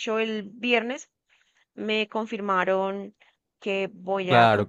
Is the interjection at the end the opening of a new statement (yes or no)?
yes